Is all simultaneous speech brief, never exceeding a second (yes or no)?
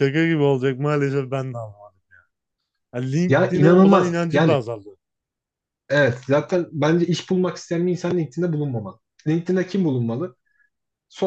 no